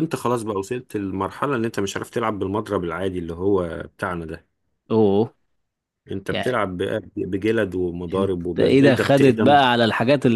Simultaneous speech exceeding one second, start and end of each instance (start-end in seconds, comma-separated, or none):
8.2-9.7